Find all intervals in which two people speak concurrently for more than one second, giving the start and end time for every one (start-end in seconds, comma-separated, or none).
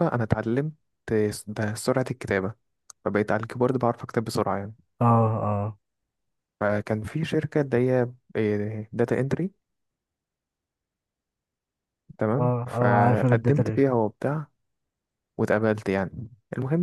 12.4-13.8